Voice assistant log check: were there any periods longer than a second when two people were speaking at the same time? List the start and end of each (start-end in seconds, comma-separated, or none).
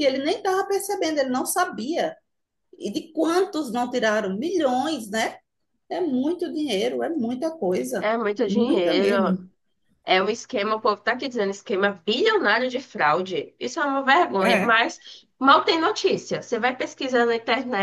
8.0-9.4